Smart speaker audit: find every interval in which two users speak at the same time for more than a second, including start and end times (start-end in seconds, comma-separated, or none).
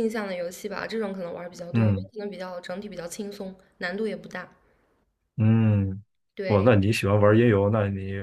none